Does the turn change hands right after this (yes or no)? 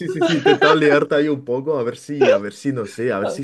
no